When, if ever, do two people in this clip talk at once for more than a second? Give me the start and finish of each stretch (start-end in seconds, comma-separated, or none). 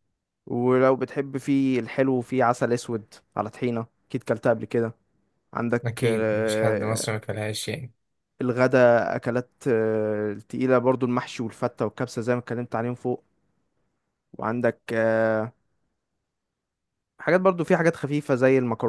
5.8-7.1